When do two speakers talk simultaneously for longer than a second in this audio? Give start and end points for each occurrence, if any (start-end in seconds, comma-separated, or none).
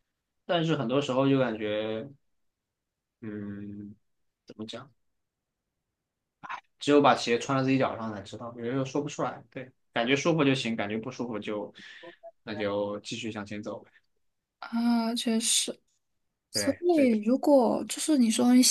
none